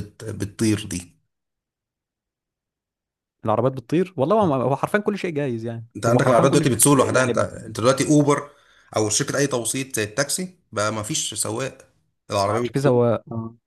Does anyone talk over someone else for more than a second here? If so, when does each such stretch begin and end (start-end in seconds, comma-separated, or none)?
6.0-7.5